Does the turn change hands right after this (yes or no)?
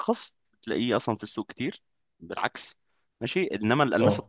no